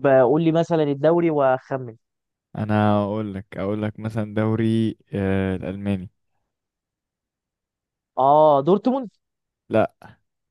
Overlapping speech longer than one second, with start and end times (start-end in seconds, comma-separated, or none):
none